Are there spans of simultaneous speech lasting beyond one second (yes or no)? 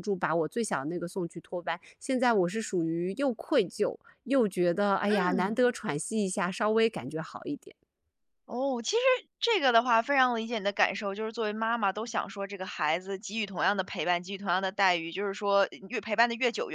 no